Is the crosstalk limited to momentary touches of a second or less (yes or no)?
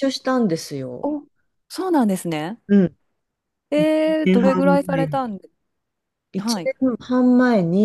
no